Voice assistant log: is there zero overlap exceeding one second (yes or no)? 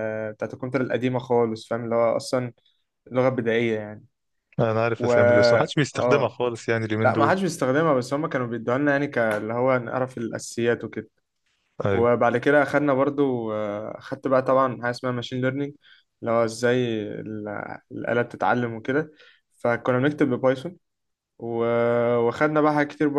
yes